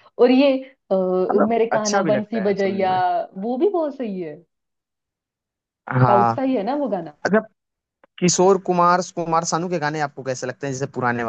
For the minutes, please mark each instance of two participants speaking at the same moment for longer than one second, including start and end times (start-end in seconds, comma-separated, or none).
1.5-2.9